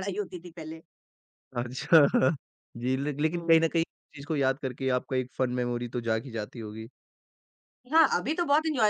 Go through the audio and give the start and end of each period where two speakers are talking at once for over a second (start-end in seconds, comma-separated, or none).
none